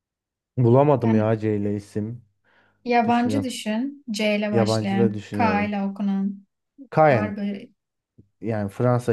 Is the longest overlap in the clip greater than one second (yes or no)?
yes